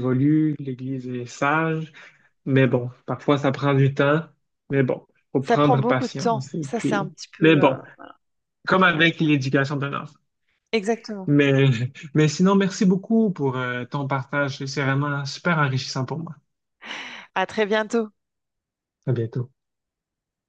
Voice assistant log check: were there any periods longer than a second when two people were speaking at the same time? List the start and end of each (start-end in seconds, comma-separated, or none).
5.4-7.8